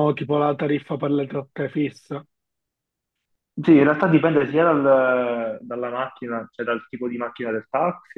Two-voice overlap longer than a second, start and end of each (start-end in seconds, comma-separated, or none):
none